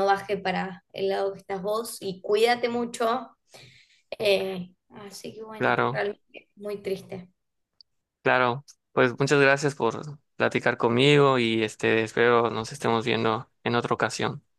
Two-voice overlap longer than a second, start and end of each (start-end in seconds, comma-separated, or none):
none